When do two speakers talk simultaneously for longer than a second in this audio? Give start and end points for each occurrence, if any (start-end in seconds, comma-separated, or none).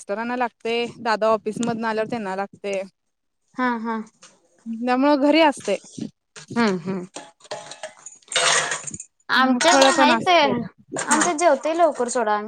9.7-11.2